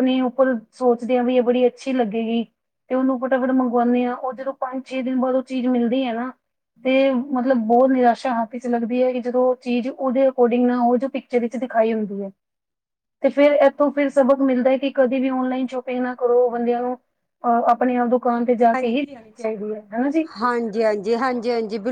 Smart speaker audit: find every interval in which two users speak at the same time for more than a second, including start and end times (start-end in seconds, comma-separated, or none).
none